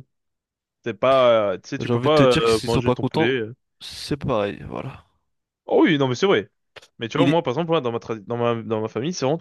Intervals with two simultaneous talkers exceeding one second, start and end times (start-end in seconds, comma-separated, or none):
1.8-3.4